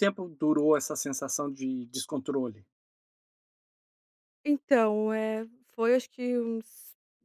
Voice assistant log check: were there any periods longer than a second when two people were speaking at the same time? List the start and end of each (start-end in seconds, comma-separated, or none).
none